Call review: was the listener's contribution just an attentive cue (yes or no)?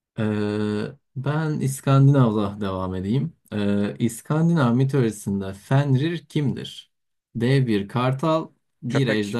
yes